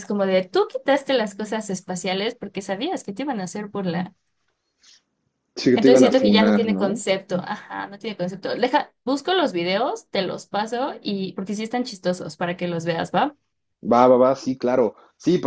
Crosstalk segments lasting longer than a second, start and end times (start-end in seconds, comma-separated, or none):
5.7-7.0